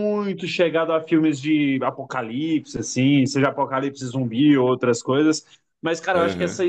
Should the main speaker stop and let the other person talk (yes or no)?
no